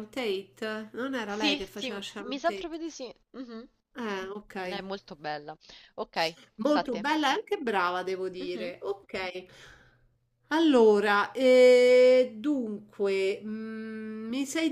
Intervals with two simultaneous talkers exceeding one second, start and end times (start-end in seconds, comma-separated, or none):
1.2-2.7